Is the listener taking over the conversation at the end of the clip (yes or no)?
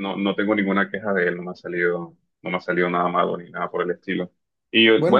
no